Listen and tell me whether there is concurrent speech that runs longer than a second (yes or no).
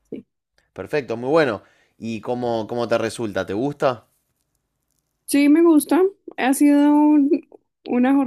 no